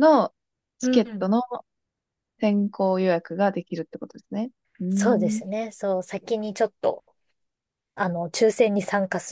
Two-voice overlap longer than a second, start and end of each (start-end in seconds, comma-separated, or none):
none